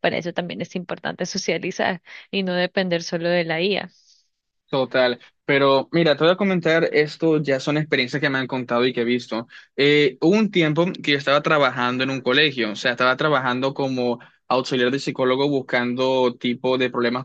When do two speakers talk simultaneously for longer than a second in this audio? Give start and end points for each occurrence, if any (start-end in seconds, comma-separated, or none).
none